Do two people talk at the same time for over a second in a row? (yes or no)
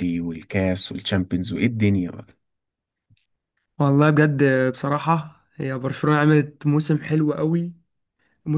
no